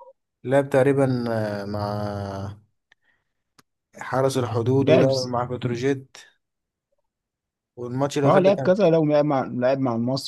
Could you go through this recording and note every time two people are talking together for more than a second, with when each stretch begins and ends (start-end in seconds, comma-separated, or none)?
none